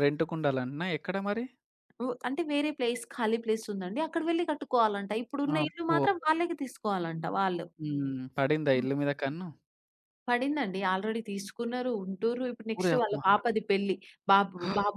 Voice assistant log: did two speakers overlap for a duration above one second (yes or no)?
no